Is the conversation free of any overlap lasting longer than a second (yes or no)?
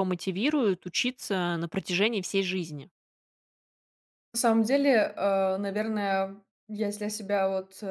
yes